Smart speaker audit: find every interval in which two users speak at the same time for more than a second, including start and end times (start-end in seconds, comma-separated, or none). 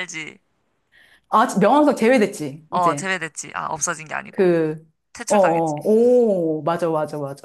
none